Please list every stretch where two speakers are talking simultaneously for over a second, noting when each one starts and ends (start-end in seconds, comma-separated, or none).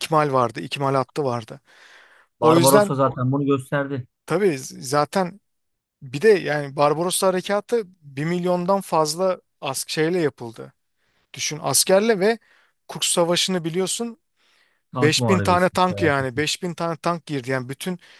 14.9-16.4